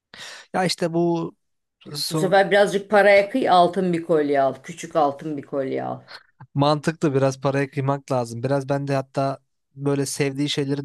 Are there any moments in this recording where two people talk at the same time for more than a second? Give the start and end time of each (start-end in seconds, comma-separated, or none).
none